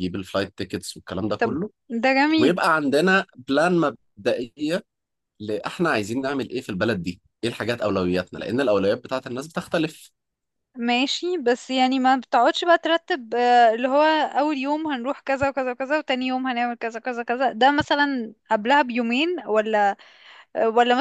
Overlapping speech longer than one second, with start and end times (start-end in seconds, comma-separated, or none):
none